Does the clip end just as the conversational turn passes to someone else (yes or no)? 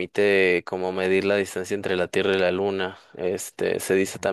no